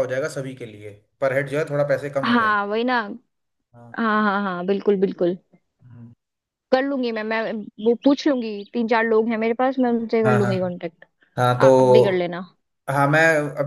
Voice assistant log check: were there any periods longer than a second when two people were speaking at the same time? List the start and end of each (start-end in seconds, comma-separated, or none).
none